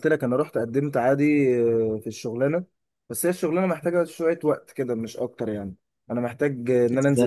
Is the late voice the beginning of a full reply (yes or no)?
no